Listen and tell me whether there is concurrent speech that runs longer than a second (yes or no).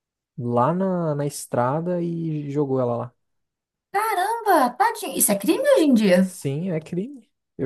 no